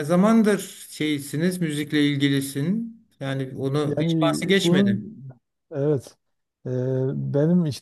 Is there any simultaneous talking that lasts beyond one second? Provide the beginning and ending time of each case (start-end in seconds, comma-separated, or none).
3.8-5.1